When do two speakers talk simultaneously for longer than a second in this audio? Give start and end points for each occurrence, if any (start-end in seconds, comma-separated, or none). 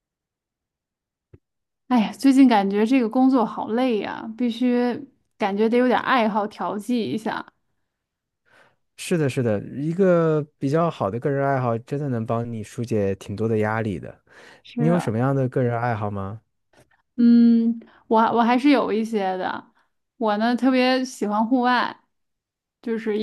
none